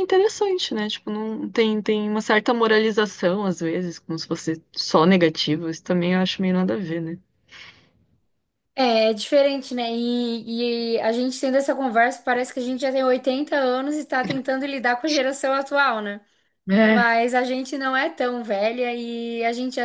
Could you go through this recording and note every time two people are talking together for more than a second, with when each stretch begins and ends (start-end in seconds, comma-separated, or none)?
none